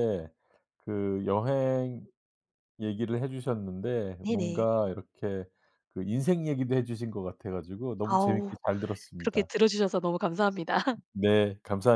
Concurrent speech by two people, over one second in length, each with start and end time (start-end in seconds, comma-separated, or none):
none